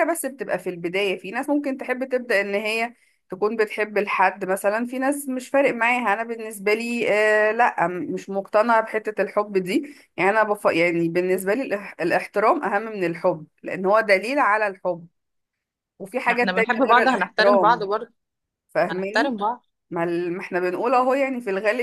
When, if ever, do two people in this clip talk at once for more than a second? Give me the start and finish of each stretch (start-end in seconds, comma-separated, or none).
16.3-17.9